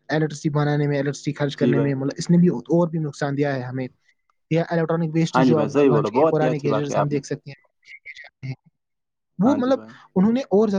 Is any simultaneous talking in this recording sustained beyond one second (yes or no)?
yes